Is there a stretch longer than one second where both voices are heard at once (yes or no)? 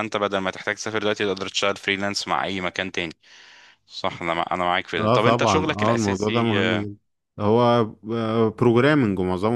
yes